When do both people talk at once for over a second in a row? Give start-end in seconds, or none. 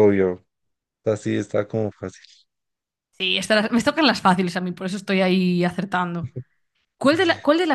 none